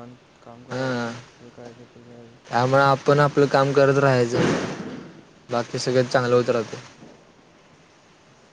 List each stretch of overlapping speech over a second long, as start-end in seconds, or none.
none